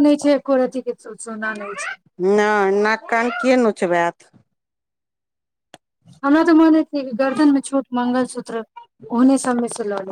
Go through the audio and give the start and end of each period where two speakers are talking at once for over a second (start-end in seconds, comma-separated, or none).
none